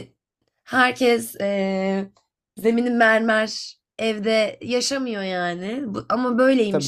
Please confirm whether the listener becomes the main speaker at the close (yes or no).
no